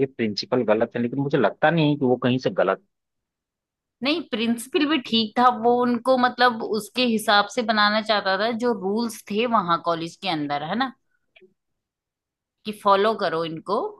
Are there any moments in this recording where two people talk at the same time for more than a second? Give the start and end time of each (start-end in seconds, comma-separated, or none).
none